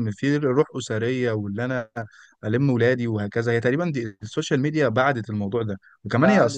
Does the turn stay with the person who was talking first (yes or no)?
yes